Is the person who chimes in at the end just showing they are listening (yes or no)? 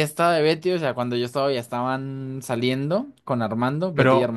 yes